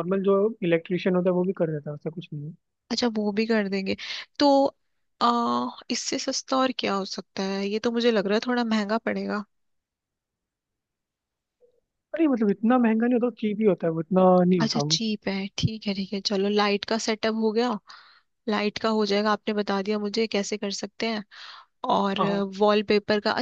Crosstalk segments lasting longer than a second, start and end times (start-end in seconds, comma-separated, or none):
none